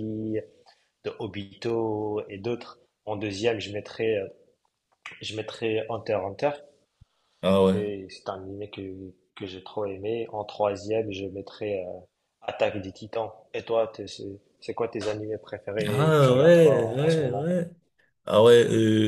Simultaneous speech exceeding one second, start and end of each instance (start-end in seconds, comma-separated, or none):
15.9-17.5